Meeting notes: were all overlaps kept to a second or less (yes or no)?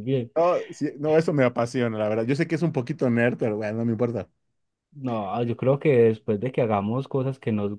yes